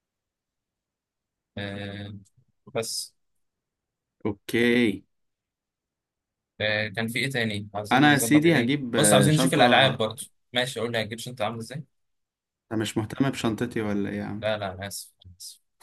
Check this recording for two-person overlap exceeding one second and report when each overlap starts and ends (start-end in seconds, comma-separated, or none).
7.9-10.1